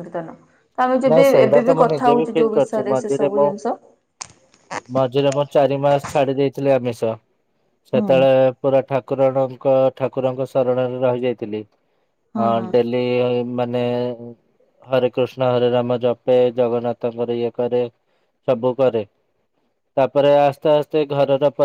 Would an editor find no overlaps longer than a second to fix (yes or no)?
no